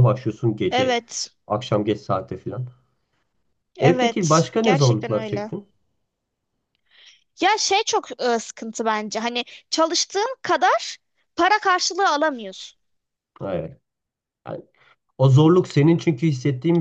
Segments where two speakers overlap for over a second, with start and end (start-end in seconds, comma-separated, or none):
3.8-5.5